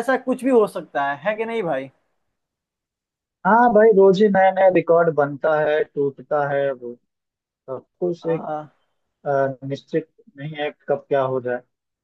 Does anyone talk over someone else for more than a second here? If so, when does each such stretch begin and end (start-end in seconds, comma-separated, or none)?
none